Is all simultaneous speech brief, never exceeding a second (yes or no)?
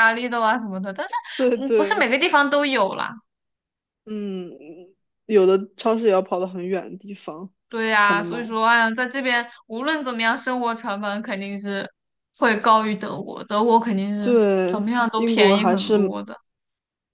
no